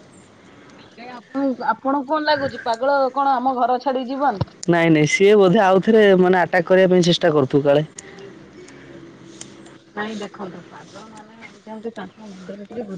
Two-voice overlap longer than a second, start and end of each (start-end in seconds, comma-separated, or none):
none